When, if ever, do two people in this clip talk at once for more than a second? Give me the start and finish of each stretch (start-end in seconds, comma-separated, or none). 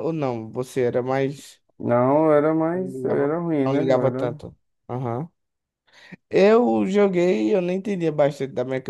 2.7-4.4